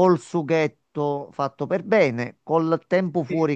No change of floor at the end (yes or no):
yes